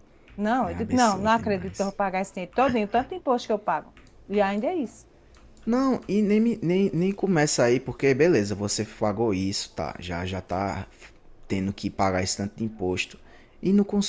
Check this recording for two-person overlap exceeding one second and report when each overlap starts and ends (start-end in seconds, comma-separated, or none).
0.6-2.0